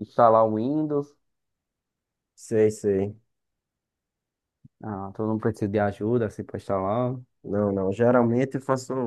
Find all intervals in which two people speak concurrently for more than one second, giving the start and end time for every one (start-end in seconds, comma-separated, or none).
none